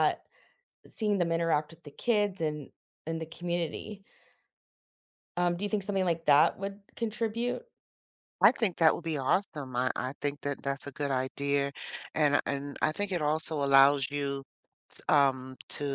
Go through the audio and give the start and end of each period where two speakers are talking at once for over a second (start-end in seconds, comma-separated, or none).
none